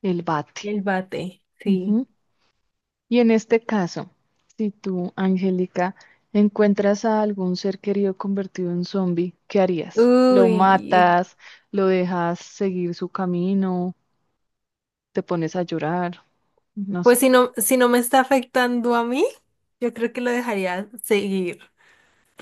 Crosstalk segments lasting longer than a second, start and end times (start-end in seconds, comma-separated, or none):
9.9-11.2